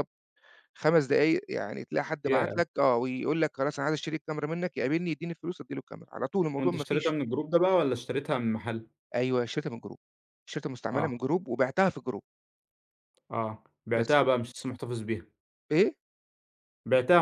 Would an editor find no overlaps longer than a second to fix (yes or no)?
yes